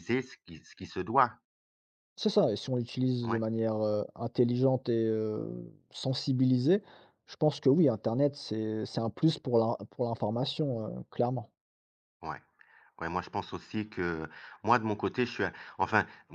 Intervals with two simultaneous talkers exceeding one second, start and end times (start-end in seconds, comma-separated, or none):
none